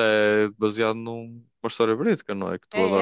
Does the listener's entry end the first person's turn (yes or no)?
yes